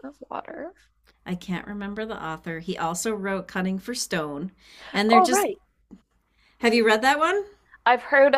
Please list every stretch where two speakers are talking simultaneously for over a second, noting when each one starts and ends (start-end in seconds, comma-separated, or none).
none